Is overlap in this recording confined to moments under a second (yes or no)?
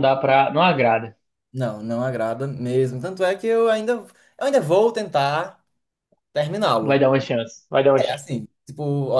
yes